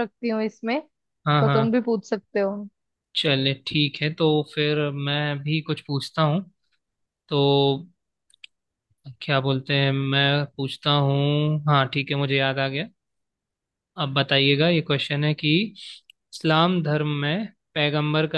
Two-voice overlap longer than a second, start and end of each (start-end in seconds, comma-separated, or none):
none